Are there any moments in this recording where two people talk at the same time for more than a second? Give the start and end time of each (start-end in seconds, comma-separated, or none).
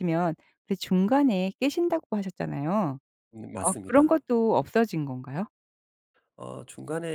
none